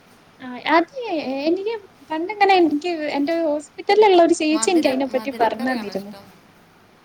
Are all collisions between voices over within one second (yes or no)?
no